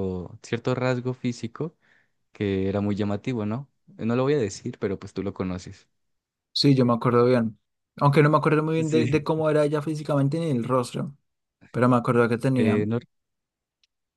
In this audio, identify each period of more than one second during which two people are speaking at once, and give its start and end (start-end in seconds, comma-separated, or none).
none